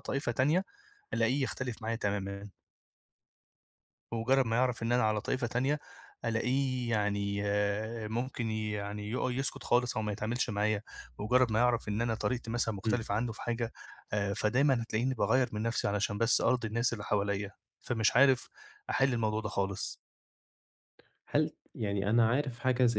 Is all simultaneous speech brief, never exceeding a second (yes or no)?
yes